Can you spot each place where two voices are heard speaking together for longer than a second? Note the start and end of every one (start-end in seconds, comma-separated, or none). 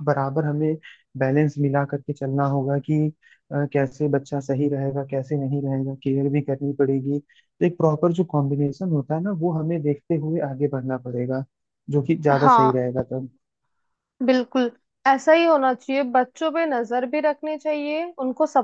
none